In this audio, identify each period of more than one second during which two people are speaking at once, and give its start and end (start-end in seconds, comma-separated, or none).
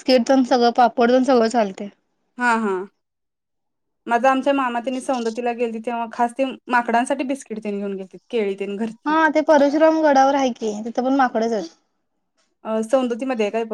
none